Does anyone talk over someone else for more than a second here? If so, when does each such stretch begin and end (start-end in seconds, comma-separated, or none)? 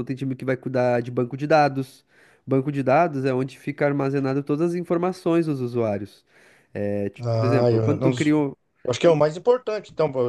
7.2-8.5